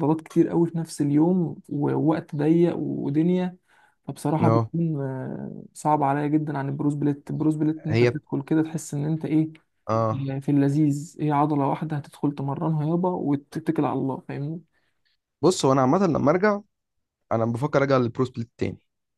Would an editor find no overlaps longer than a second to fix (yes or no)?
yes